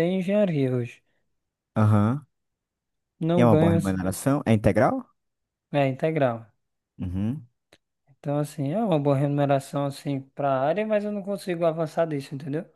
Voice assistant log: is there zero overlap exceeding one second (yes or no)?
yes